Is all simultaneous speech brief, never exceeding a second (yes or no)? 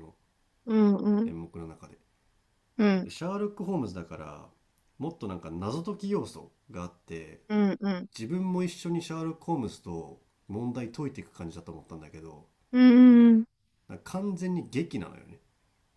yes